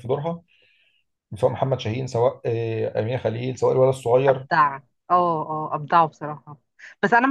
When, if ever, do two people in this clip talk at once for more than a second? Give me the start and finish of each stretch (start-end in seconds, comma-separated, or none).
none